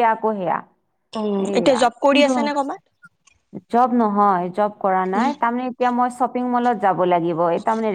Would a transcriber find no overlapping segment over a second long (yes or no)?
yes